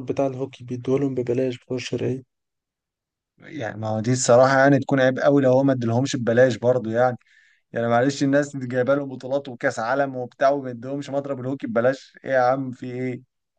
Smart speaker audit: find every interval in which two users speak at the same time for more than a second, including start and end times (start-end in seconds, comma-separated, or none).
none